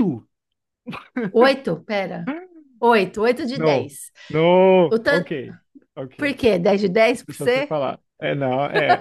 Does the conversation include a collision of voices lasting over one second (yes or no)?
no